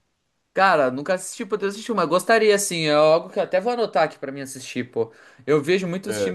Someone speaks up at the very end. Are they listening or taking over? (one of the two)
listening